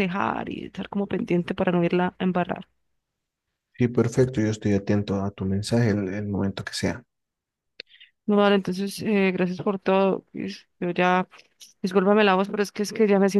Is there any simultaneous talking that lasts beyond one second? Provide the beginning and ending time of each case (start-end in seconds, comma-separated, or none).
none